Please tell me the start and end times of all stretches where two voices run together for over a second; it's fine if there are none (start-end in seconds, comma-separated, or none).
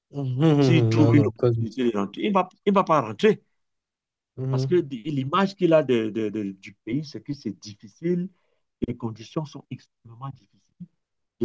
0.6-1.8